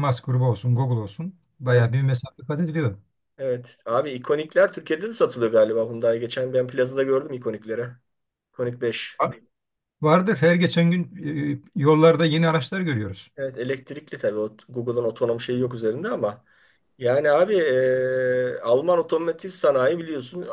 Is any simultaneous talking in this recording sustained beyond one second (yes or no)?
no